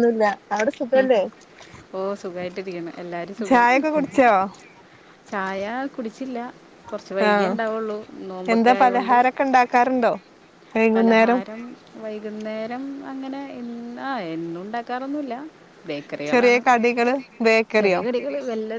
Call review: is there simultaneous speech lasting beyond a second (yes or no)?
no